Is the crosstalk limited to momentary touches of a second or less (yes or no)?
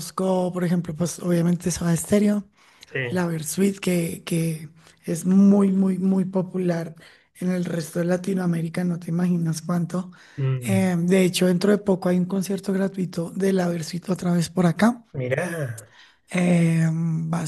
yes